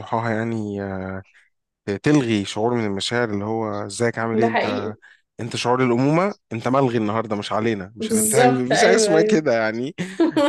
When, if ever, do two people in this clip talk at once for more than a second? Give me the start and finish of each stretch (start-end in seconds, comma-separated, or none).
8.0-9.4